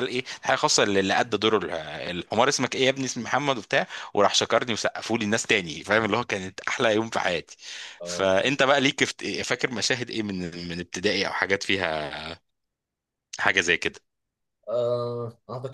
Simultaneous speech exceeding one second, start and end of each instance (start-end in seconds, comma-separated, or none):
none